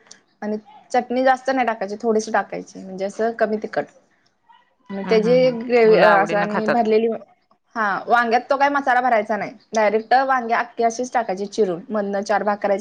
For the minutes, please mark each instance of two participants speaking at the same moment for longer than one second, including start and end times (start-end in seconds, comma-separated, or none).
5.0-6.8